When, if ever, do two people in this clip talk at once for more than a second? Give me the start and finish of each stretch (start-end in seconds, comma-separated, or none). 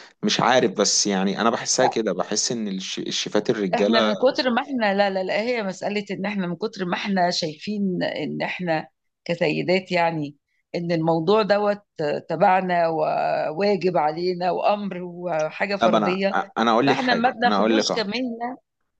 16.9-18.1